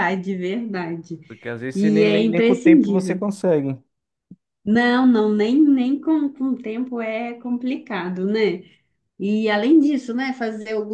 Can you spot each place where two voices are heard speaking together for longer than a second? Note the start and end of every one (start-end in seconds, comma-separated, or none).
1.7-3.2